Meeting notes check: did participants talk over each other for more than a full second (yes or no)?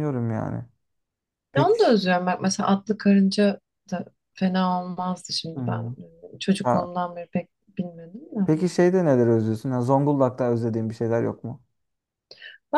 no